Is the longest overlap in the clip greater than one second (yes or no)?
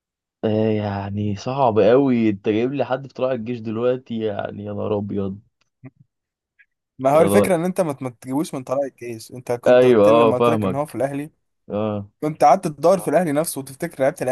yes